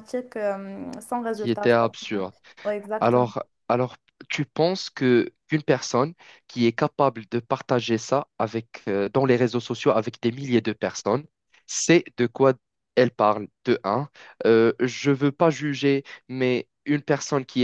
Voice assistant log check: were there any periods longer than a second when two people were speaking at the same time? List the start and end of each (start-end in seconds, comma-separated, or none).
none